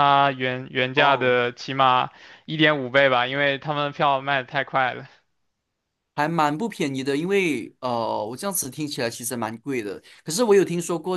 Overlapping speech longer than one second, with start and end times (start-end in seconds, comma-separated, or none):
none